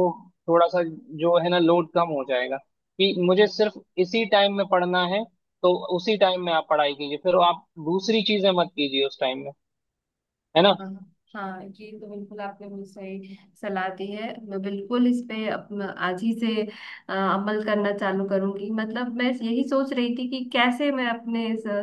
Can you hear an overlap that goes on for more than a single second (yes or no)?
no